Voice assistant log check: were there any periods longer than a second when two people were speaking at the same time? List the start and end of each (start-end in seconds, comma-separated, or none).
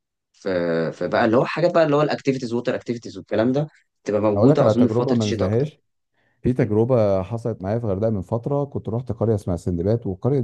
4.4-5.7